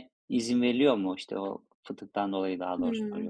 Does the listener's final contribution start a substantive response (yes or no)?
yes